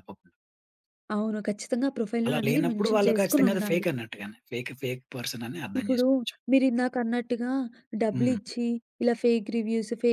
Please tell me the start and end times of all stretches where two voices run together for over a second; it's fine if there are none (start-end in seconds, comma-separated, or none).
2.2-3.9